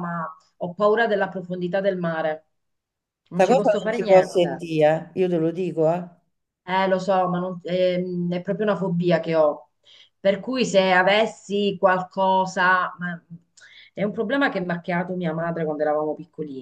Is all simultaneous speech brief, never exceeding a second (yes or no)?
no